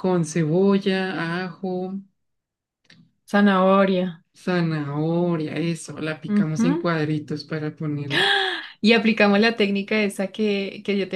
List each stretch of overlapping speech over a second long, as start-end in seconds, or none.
none